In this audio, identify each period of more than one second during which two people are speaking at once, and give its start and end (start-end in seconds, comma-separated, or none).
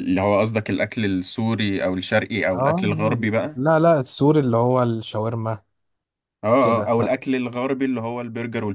none